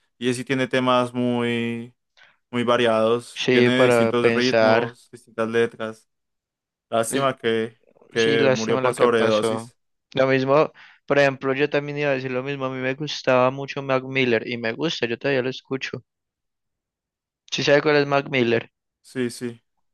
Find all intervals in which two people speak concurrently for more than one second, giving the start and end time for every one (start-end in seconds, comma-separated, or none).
3.4-5.0, 8.1-9.7